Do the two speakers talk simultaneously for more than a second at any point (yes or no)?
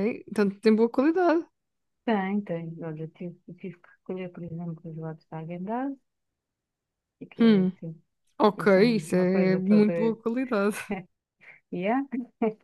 yes